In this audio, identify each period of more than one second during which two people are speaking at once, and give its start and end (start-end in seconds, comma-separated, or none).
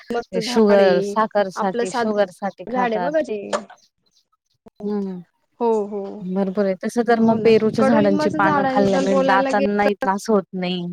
7.2-10.1